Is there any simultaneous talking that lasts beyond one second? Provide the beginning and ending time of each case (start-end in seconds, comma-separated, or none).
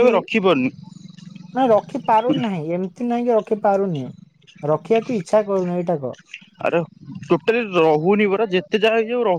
none